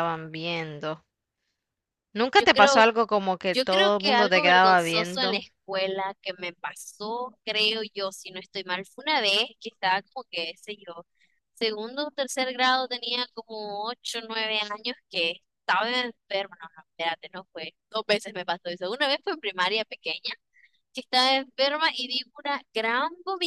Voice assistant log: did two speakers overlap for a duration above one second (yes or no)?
yes